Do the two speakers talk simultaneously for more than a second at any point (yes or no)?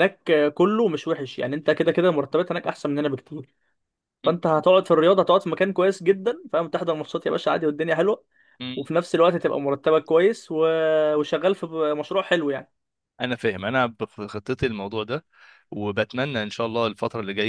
no